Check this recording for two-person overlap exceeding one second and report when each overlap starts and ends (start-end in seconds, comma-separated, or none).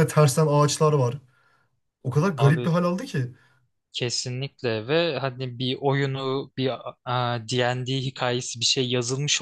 none